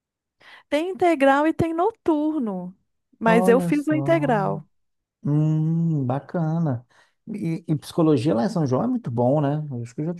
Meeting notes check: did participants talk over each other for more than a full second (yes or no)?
yes